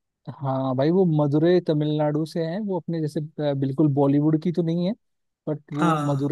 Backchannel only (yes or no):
yes